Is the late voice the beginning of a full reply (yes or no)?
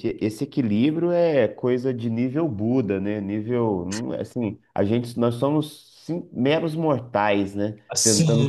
no